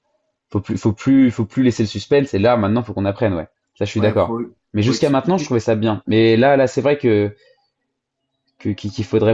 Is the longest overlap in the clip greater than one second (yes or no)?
yes